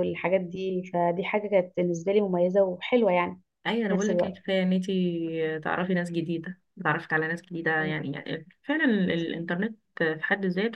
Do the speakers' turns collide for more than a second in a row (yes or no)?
no